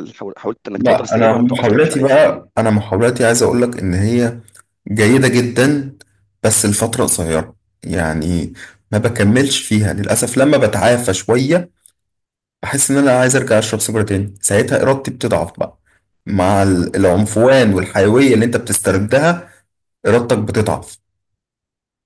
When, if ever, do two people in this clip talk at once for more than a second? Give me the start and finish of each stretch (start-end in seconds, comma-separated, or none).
0.7-2.2